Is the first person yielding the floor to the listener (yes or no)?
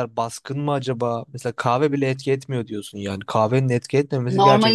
yes